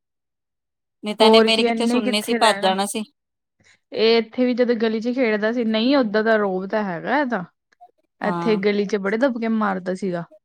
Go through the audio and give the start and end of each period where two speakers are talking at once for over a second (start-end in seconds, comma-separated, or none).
1.2-2.7